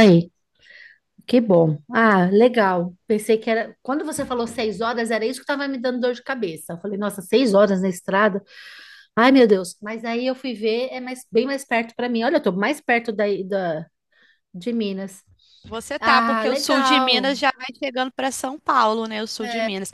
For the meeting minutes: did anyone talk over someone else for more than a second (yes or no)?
yes